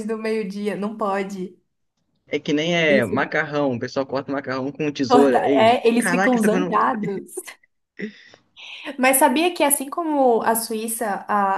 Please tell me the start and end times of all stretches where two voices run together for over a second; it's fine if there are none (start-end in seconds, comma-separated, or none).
5.1-6.8